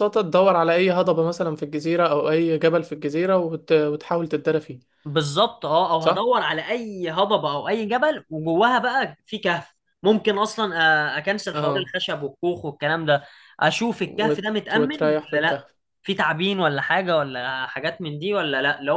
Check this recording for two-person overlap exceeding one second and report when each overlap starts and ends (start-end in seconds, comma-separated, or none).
14.0-15.6